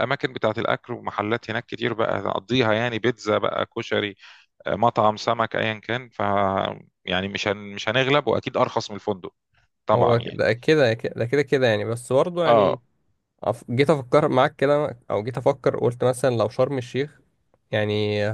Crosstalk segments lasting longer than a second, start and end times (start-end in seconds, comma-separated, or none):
none